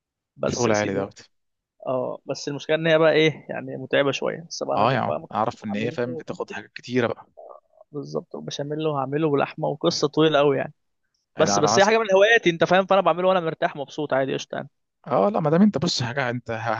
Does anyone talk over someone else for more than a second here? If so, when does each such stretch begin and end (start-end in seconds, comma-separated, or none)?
4.8-6.2